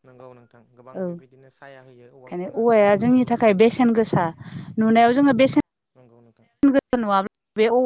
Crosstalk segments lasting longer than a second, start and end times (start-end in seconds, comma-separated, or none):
2.1-4.1